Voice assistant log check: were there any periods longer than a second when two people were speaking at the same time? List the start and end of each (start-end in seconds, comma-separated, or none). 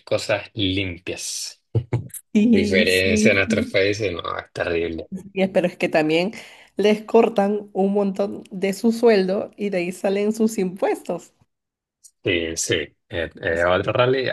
2.5-3.8